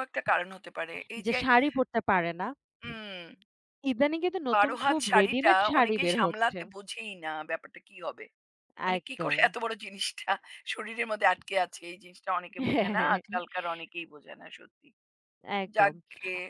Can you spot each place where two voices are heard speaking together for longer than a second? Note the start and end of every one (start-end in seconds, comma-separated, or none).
4.5-6.6